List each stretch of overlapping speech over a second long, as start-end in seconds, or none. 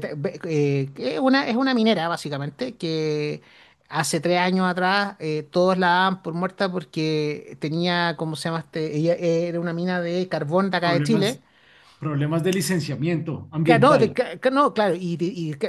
none